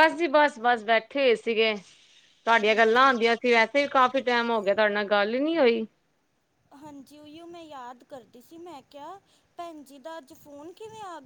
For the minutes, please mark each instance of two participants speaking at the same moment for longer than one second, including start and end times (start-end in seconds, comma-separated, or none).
none